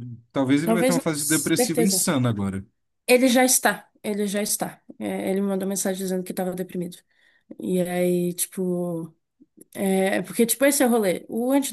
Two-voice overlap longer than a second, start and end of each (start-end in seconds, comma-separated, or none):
0.6-2.1